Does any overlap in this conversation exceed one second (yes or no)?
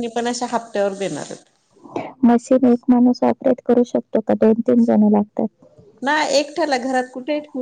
no